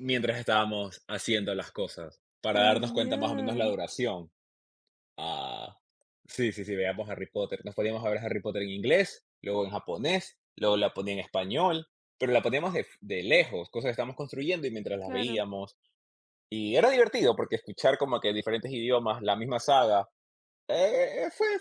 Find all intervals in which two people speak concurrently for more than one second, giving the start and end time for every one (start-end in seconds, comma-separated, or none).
2.5-3.7